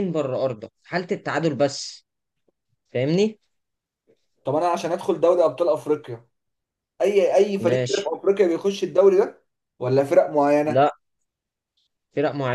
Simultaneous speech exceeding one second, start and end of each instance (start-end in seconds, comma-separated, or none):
none